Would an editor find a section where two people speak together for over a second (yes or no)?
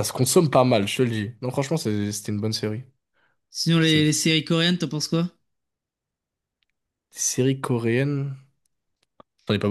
no